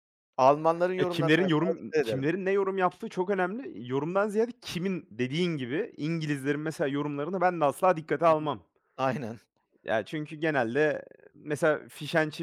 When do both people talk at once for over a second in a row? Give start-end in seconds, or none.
1.0-2.3